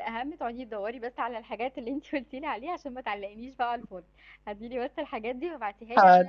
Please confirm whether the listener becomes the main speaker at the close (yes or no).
no